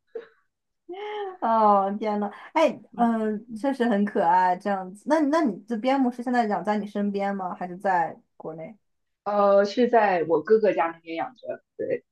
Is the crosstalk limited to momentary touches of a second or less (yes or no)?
yes